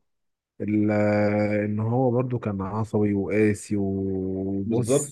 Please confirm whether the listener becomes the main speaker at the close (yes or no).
no